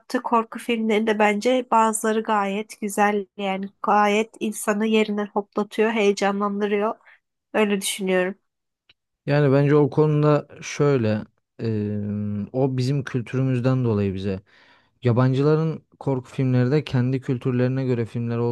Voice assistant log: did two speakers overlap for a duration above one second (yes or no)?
no